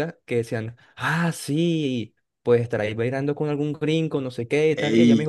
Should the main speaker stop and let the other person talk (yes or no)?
no